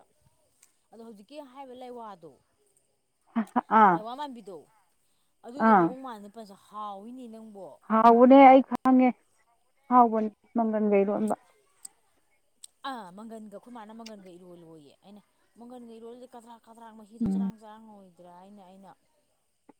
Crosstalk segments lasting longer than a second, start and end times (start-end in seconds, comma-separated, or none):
none